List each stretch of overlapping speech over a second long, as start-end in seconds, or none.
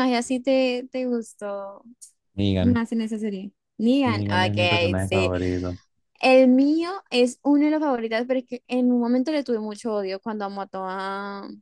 4.0-5.3